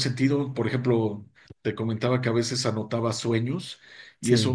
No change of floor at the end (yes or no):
yes